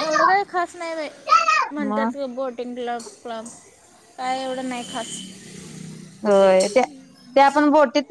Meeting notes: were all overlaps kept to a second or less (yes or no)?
yes